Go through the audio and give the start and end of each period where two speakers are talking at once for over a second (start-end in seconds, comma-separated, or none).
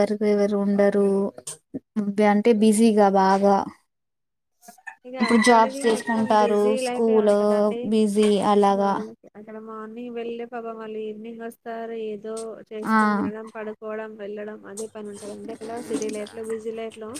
5.2-7.2